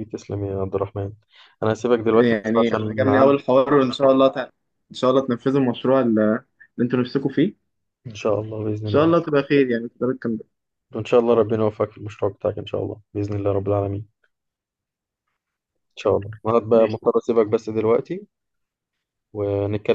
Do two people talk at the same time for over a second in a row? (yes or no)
yes